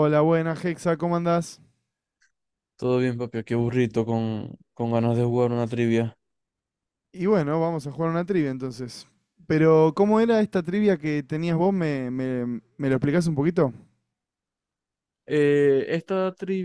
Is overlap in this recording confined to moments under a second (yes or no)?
yes